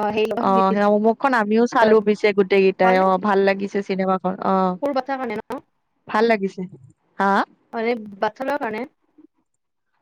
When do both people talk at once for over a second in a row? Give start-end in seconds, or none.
none